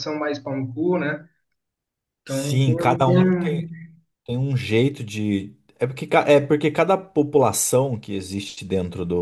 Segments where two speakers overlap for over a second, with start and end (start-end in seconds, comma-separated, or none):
2.2-3.7